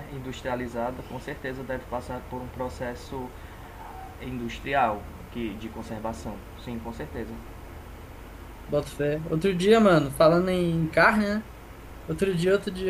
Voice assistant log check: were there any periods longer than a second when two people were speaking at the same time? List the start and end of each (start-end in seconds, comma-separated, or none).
none